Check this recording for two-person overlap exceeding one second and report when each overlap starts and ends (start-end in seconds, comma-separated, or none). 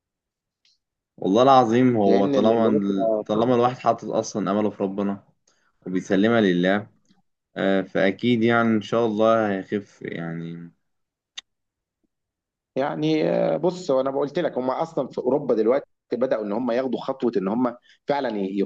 2.0-3.5